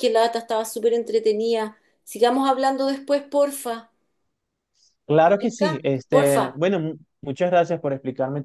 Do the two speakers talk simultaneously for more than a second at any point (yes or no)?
yes